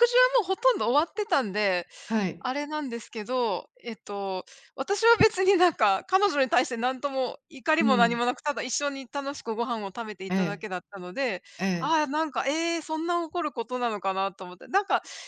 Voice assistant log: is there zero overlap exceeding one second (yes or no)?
yes